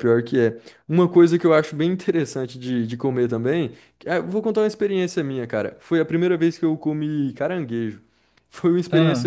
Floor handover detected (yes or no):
no